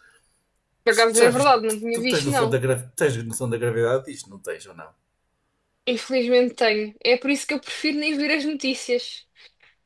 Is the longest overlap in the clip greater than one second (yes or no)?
yes